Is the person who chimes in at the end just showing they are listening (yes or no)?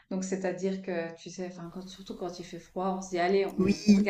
yes